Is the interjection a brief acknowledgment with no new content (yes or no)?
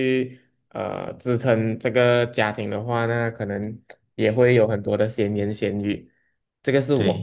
yes